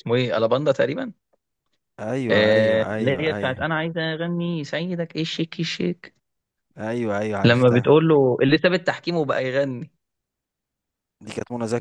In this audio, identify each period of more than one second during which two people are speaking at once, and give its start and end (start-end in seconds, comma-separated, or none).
2.3-3.7